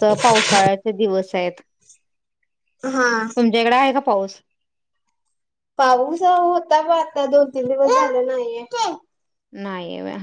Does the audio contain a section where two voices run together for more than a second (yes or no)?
no